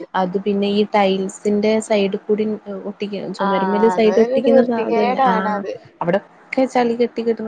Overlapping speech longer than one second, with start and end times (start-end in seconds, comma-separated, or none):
3.5-5.6